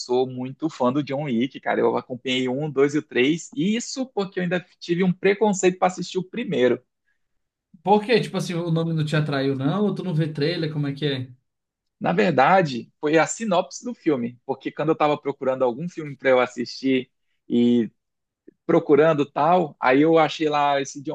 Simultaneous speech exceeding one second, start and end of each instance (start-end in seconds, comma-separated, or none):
none